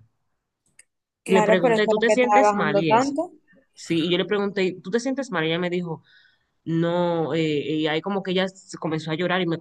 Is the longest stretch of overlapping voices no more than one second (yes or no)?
no